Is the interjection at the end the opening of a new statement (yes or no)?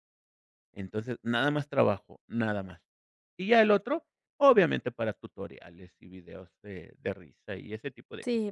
yes